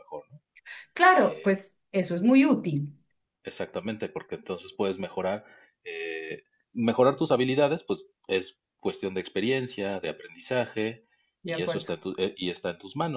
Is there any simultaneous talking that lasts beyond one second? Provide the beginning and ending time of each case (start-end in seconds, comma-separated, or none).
none